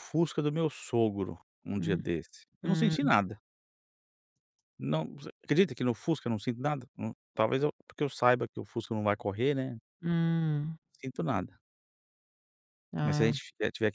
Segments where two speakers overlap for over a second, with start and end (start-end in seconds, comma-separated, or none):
none